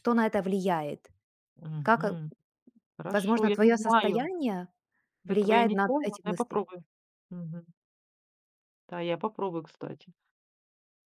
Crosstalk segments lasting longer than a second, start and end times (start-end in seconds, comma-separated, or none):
3.1-4.3, 5.3-6.6